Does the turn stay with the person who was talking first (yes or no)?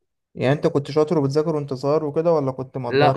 no